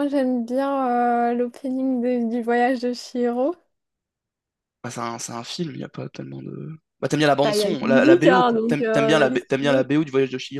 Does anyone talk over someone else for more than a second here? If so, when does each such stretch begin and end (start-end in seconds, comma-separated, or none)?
7.4-9.9